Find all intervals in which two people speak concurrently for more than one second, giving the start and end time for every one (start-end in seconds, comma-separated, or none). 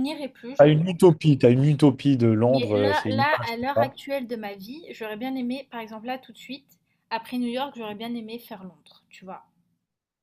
2.5-4.0